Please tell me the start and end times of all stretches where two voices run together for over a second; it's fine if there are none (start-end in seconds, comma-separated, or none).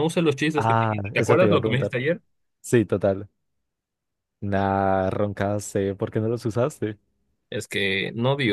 0.6-1.9